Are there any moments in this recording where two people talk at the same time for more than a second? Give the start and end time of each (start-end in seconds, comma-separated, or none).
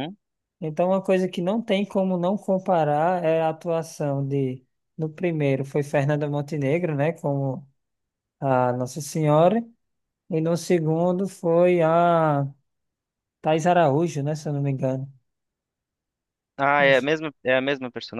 none